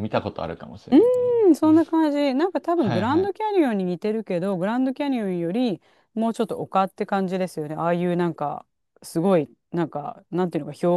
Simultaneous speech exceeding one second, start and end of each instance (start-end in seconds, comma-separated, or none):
none